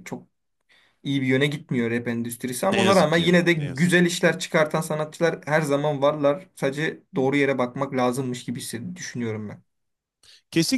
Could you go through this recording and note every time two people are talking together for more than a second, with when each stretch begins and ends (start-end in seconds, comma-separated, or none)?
2.6-3.9